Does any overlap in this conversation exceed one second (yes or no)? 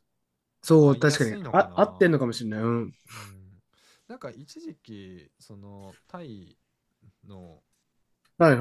yes